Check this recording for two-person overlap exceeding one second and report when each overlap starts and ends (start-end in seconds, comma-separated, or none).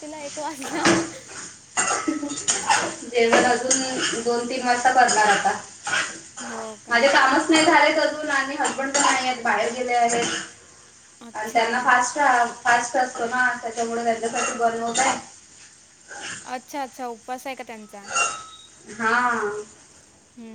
none